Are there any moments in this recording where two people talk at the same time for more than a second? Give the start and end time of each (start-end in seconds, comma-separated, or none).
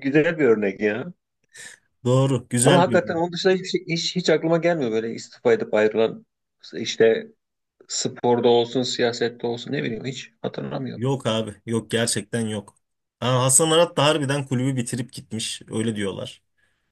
none